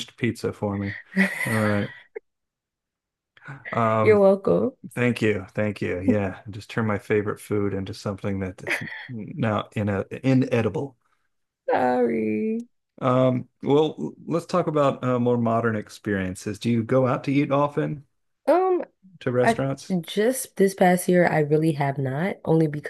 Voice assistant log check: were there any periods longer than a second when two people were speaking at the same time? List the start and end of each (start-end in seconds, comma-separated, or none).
none